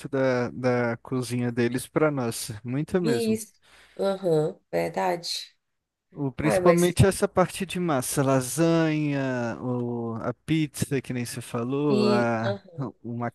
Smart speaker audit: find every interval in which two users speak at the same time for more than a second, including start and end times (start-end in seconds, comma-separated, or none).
none